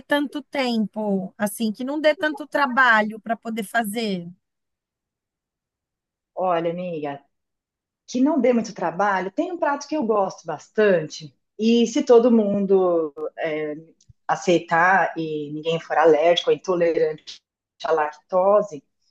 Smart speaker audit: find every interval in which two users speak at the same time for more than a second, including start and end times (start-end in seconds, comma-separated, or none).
none